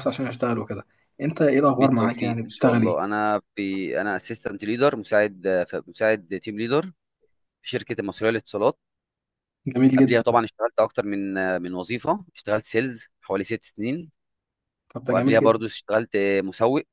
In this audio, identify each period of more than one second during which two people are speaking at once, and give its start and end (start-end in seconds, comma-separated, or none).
1.7-3.0